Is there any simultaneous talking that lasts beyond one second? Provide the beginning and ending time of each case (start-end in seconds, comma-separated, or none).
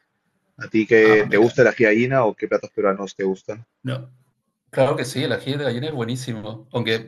none